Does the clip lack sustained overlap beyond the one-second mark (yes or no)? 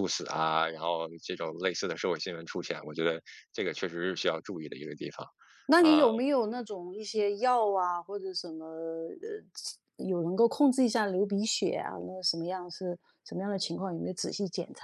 yes